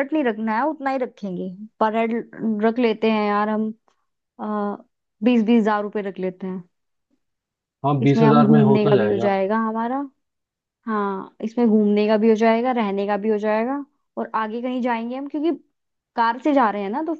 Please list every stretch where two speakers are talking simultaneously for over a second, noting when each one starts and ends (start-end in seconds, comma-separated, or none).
8.0-9.4